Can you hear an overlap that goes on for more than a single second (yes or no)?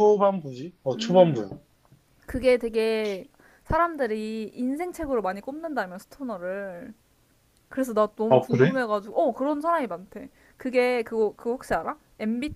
no